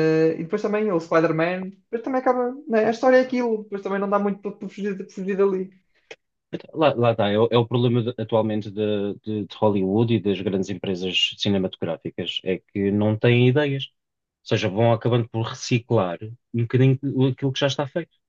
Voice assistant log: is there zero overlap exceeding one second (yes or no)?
yes